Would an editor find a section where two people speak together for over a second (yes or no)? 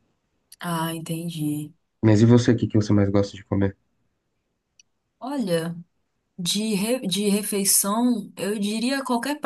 no